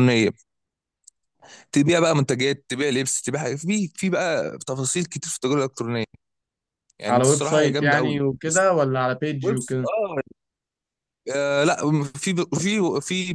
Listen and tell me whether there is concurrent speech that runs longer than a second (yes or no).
yes